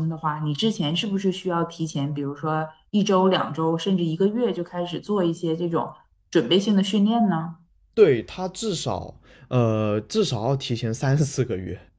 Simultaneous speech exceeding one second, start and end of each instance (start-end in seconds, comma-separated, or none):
none